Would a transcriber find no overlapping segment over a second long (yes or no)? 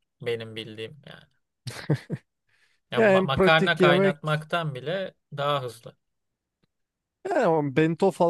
no